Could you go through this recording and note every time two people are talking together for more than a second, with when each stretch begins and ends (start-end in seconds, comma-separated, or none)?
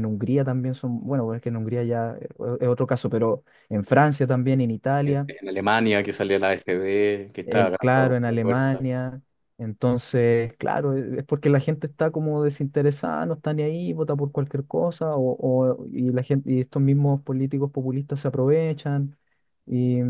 7.4-8.8